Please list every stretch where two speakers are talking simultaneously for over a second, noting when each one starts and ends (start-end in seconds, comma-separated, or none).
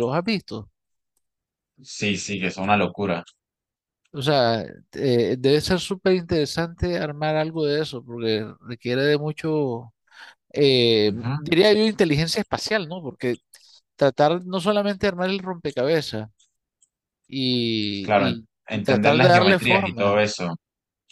17.9-20.3